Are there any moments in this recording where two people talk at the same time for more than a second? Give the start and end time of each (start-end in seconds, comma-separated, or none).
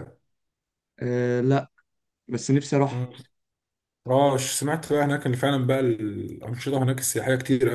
none